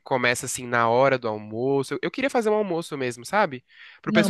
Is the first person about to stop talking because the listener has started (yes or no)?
no